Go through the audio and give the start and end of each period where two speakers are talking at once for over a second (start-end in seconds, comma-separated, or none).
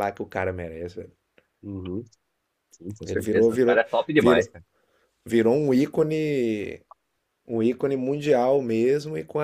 3.1-4.5